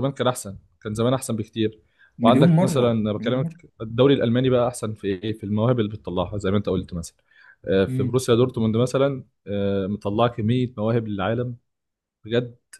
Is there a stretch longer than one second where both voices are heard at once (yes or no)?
yes